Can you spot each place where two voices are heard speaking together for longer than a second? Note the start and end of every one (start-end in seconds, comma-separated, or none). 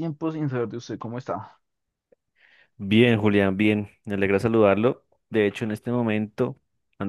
none